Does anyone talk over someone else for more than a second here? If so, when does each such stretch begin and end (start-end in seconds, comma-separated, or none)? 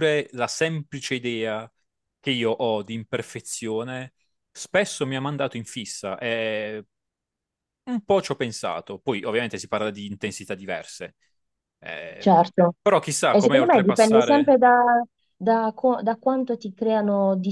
13.3-14.6